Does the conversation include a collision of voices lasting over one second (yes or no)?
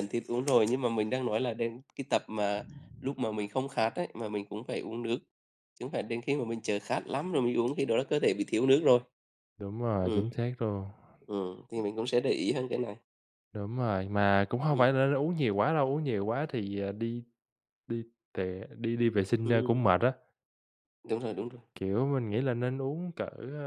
no